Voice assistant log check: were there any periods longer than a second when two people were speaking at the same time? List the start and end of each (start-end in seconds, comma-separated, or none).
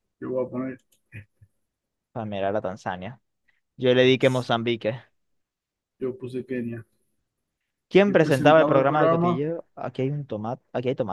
8.1-9.3